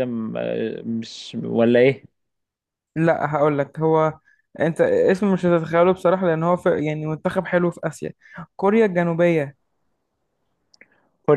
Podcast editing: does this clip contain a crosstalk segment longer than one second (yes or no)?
no